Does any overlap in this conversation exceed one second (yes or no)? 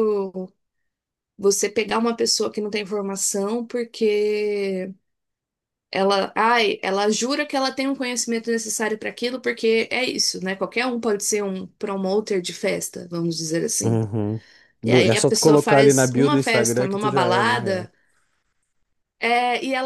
yes